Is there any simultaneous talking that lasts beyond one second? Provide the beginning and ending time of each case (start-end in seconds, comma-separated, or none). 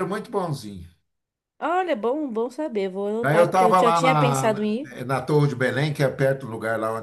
3.2-4.9